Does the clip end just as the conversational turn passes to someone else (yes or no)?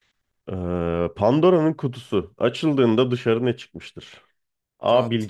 no